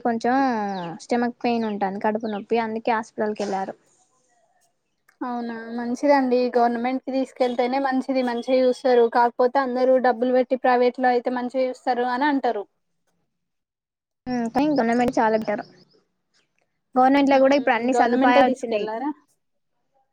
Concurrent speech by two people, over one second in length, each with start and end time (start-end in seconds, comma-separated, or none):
17.4-18.9